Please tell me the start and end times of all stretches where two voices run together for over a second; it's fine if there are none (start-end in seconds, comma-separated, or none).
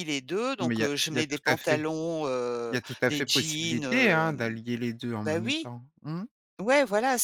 0.6-1.8, 2.7-4.4